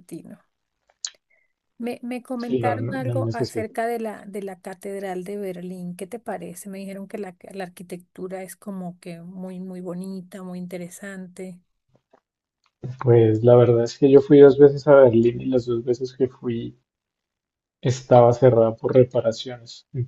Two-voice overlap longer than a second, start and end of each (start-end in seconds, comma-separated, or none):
2.4-3.7